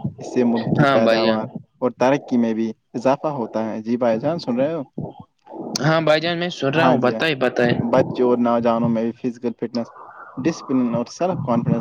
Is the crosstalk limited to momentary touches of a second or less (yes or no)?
yes